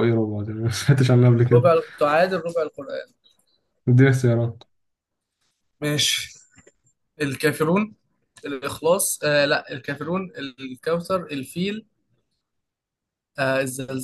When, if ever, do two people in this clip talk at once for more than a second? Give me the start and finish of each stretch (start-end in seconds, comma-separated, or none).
none